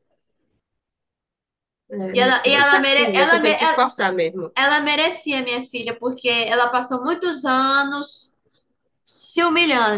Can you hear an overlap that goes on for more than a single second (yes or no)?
yes